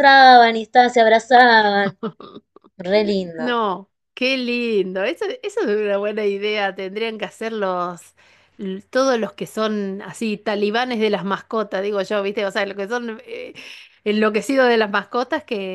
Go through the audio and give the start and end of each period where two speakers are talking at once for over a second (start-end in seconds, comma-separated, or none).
none